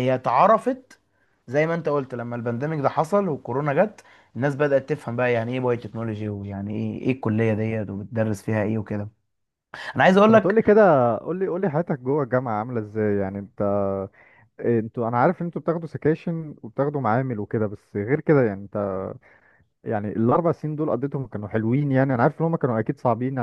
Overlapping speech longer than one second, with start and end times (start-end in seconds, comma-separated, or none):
none